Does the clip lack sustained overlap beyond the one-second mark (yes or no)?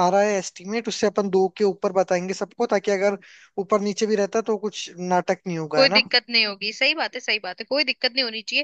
yes